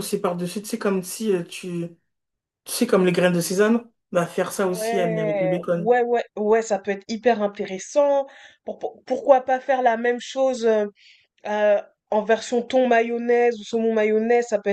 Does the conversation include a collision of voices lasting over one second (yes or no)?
yes